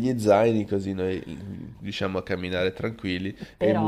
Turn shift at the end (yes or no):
yes